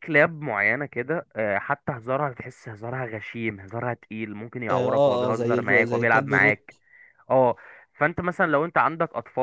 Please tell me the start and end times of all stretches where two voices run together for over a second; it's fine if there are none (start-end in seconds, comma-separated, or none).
4.7-6.7